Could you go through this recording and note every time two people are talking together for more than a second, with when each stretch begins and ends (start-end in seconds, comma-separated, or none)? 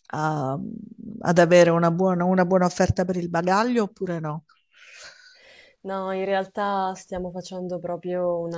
none